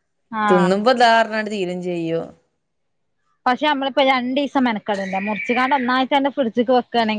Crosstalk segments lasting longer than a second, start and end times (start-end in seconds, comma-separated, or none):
none